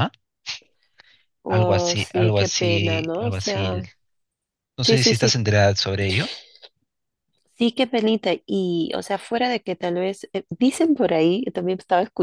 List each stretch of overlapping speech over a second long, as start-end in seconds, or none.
1.5-3.7